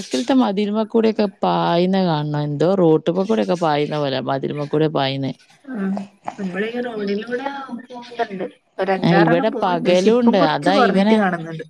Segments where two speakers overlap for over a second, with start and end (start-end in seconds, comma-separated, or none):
9.1-10.7